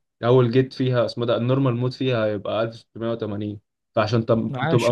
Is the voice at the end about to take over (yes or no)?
no